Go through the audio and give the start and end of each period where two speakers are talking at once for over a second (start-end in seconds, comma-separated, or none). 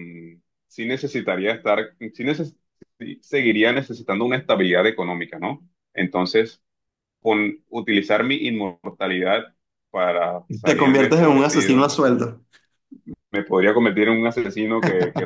10.6-11.9